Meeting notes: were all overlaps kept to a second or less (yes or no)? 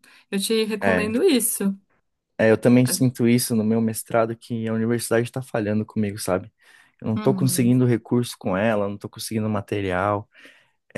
yes